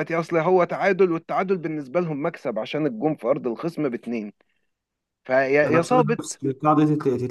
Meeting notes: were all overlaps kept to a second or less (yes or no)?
yes